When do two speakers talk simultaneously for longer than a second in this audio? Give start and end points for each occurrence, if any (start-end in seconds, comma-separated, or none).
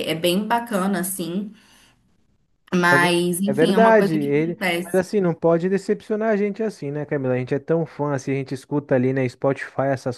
2.9-5.0